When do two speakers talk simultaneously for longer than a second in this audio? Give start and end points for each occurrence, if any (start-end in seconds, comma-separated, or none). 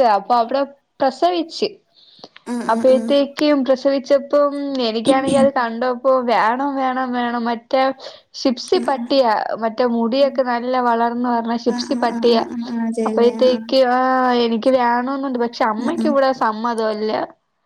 none